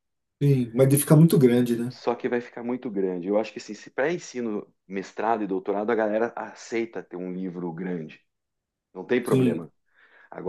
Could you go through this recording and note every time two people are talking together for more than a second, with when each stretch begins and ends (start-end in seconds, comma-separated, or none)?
none